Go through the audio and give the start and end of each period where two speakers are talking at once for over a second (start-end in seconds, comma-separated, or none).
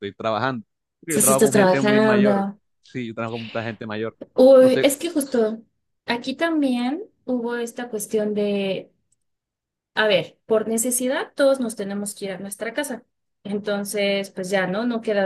1.1-2.5